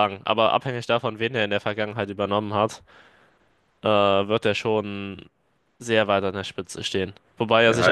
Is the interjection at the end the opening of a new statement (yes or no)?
no